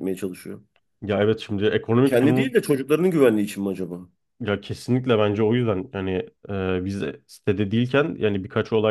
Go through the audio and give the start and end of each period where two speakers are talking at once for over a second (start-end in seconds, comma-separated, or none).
none